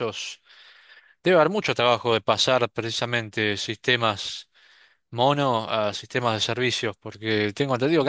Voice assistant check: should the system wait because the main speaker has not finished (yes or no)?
yes